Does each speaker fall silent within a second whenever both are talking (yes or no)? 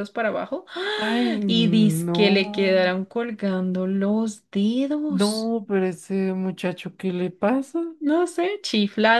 no